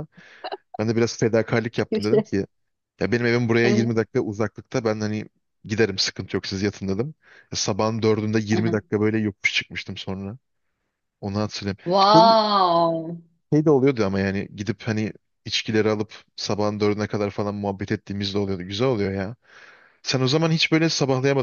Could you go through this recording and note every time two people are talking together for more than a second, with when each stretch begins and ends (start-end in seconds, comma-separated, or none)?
none